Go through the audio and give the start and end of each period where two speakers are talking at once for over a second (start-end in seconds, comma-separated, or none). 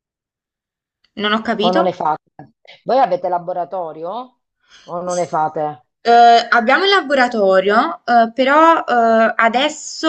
none